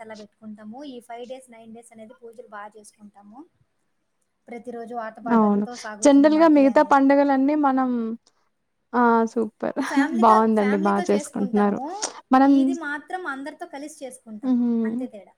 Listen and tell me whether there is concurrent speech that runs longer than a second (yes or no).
yes